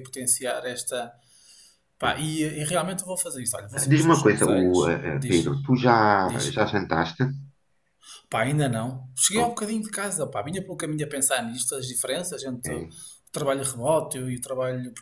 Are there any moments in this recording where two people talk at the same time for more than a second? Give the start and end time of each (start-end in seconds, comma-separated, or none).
3.9-5.5